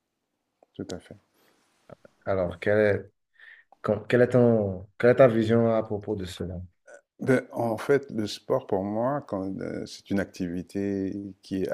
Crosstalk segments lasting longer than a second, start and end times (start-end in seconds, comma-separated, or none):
none